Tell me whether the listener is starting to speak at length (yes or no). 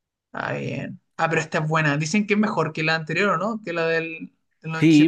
yes